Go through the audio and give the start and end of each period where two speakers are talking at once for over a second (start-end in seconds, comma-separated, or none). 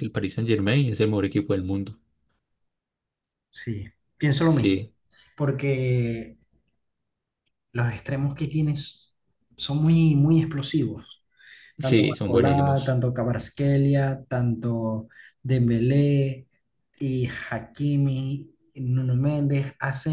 11.8-13.0